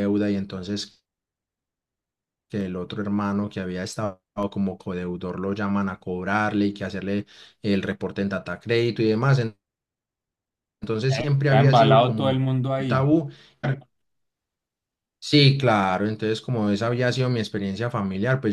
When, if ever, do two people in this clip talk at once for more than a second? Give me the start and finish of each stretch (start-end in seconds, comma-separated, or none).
11.4-13.1